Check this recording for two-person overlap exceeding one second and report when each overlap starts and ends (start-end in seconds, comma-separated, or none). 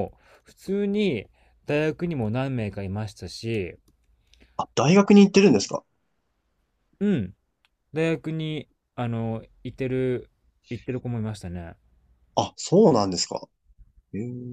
none